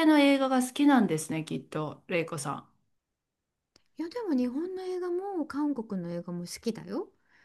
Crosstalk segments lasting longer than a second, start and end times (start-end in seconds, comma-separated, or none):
none